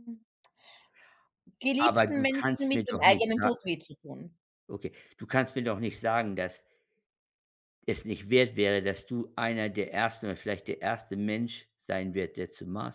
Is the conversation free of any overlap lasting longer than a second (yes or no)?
no